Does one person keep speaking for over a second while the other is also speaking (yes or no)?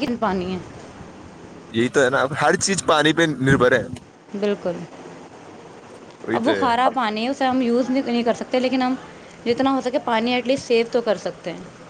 no